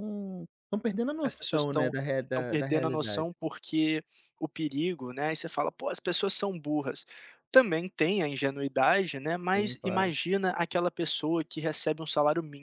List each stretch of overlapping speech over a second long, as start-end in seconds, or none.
1.2-3.3